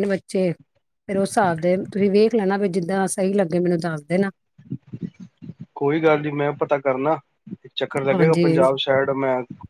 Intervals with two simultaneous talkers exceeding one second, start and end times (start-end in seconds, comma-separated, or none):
none